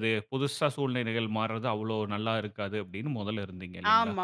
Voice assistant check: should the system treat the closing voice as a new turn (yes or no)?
yes